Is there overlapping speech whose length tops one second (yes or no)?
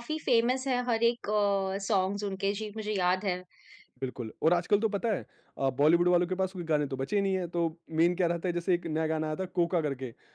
no